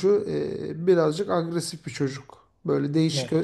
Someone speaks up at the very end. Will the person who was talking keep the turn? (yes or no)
yes